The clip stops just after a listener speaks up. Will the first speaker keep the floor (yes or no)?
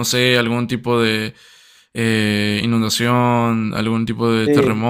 no